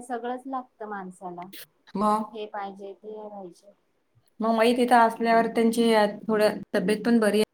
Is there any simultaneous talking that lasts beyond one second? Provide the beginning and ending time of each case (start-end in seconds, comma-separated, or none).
none